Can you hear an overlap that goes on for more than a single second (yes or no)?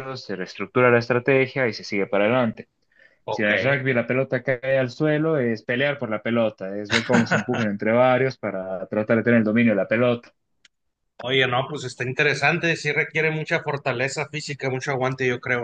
no